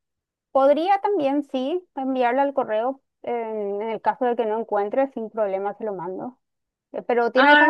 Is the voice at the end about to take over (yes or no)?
no